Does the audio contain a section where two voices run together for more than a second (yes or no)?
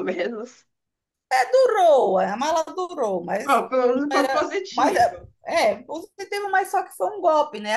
yes